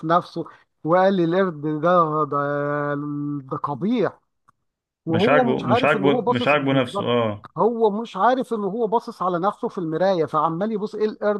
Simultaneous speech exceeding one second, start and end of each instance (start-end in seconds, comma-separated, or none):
5.1-7.1